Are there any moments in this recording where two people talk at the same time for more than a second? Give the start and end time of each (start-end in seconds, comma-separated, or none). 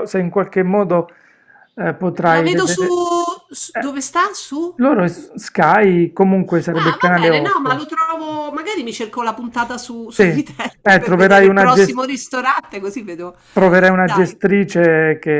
6.7-7.9, 10.1-12.3